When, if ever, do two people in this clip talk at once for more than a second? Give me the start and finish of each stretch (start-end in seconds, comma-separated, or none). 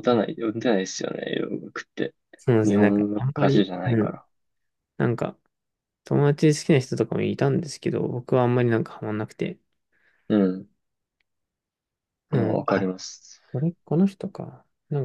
2.6-4.2